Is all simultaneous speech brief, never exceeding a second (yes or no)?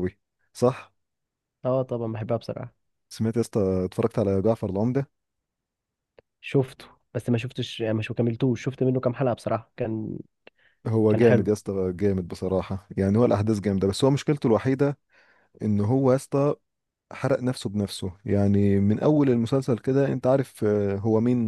yes